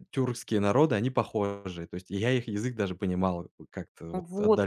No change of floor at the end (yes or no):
no